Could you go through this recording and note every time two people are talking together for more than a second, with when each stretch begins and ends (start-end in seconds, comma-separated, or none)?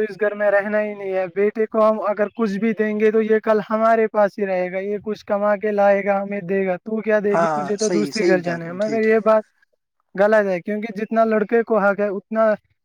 7.3-9.1